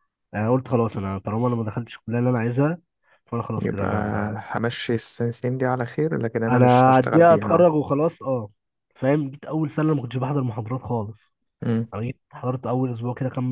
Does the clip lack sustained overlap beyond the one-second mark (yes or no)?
no